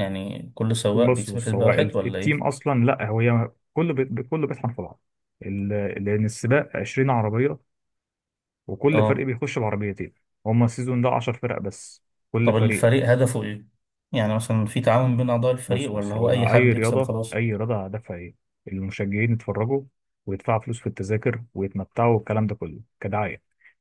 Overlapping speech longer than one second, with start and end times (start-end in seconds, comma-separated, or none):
0.9-2.5, 15.7-17.3